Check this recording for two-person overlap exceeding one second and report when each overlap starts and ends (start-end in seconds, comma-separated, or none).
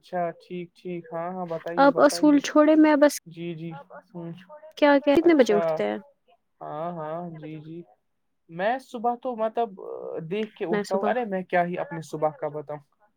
none